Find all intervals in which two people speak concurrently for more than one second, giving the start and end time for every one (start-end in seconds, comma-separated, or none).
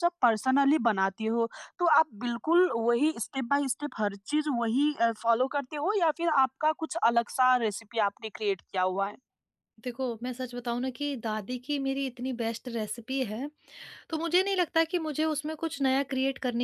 none